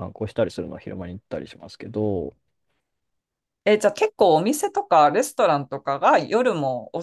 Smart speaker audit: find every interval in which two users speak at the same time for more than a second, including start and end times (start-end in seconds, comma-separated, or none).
none